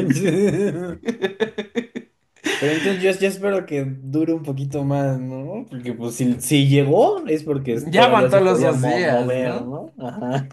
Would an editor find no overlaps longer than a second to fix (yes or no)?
no